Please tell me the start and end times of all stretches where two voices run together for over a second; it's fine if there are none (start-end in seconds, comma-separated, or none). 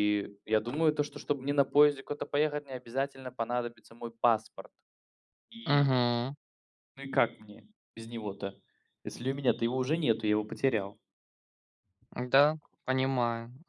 none